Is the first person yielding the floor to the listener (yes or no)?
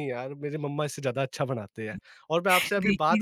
no